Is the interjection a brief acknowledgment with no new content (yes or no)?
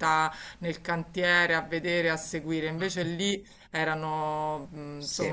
yes